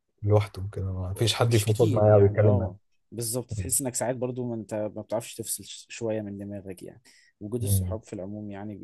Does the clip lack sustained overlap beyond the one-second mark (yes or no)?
no